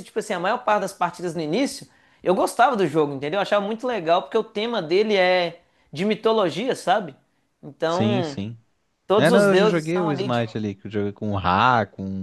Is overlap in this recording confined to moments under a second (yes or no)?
no